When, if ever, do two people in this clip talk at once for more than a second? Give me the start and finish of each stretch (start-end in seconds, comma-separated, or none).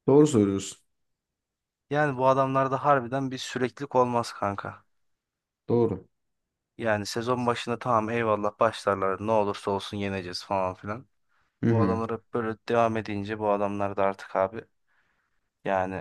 none